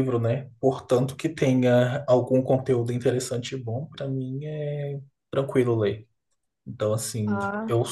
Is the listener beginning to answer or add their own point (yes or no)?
no